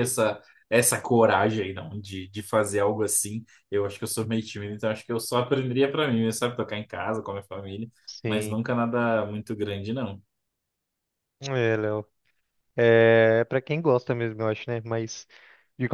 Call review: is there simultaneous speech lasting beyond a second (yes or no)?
no